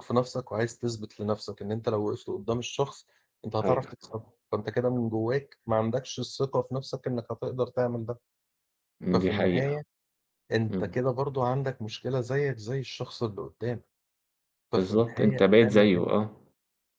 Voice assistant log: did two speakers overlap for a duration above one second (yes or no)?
yes